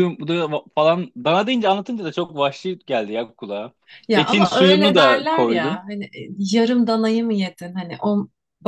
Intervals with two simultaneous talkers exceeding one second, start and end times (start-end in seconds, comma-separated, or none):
4.1-5.8